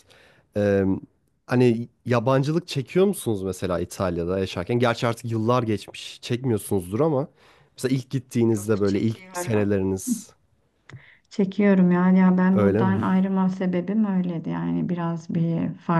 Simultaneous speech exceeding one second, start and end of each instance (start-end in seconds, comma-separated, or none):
8.5-9.7